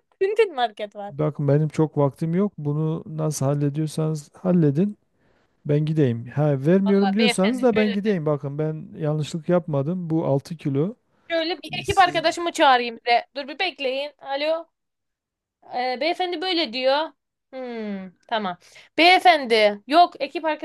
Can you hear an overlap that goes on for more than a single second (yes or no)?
yes